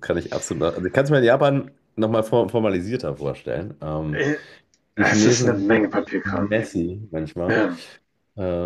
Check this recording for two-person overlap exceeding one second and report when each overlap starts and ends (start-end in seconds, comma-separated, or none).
5.0-6.6